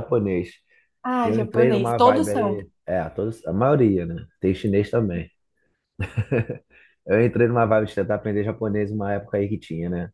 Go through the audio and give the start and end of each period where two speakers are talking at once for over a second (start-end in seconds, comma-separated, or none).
1.2-2.7